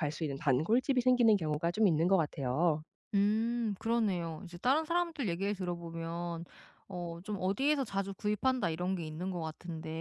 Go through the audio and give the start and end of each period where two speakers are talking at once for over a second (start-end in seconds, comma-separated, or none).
none